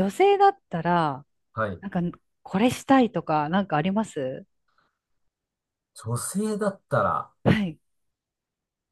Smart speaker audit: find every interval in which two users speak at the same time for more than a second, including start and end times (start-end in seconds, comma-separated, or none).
none